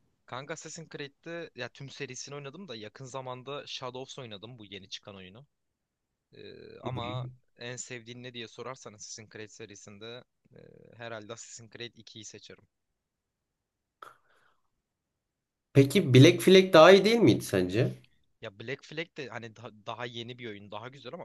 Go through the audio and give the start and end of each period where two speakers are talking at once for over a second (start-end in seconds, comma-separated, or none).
none